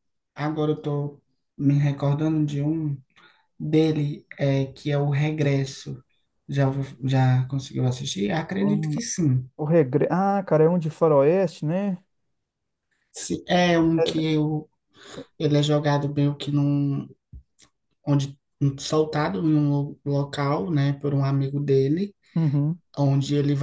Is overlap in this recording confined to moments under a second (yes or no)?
yes